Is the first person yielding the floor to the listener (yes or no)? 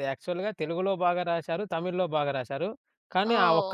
yes